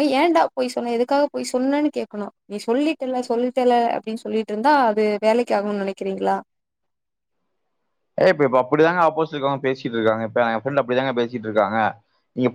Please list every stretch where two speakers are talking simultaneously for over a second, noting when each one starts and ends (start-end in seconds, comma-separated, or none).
none